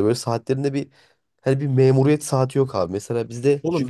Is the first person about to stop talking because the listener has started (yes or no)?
yes